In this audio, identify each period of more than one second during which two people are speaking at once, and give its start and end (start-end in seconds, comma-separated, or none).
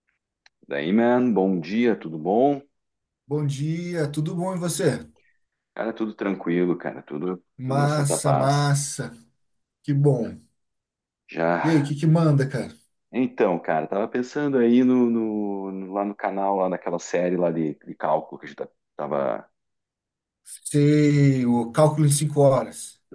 7.6-8.8